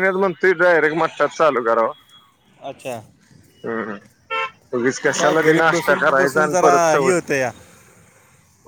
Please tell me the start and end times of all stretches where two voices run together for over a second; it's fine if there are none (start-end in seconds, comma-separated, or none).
5.2-7.2